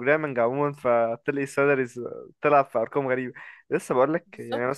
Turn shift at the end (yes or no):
no